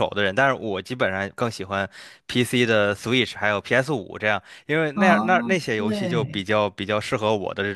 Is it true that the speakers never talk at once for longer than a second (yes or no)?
no